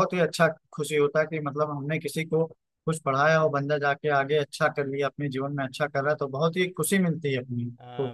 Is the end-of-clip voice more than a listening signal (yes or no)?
yes